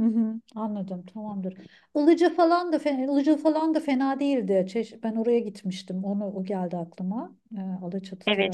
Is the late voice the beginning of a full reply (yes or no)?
yes